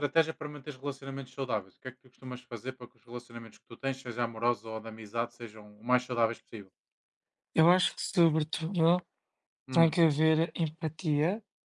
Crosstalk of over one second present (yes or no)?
no